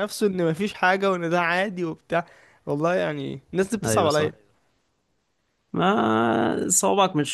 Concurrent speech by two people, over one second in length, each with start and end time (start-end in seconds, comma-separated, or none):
none